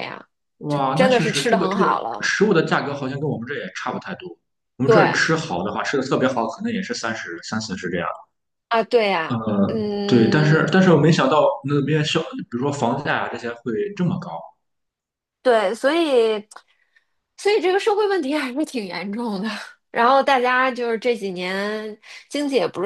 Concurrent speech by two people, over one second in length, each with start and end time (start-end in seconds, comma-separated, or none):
0.7-2.3